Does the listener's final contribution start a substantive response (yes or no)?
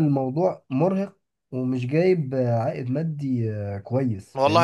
yes